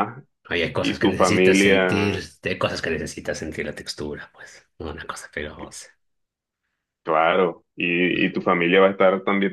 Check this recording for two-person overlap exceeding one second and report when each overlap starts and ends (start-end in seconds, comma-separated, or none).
0.8-2.2